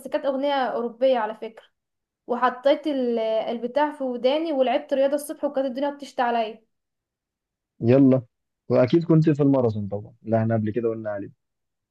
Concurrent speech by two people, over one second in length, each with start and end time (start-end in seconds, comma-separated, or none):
none